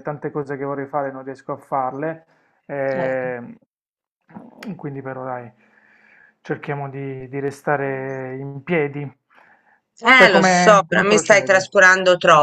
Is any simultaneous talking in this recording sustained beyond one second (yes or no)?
yes